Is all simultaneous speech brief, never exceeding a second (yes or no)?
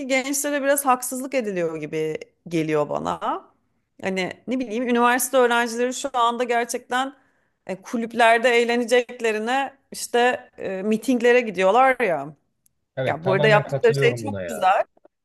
no